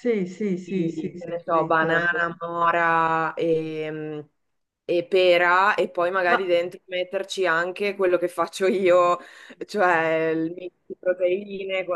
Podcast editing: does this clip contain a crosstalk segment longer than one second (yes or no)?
yes